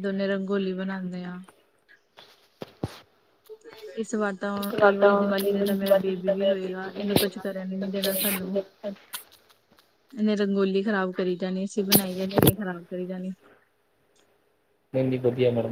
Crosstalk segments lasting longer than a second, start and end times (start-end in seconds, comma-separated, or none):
4.9-7.1